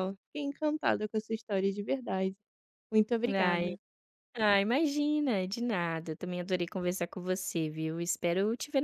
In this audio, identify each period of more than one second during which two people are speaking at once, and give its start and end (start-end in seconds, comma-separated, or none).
none